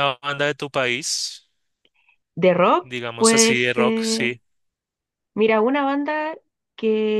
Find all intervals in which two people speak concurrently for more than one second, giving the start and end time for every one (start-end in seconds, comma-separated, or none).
2.8-4.3